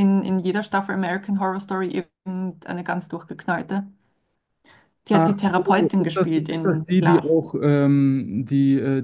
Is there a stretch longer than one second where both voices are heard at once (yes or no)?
yes